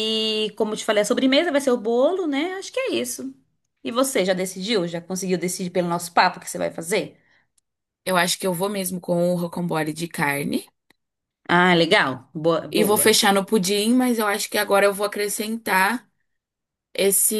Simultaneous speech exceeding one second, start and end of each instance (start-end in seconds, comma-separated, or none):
none